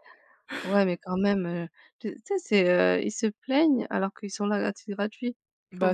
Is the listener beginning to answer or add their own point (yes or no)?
yes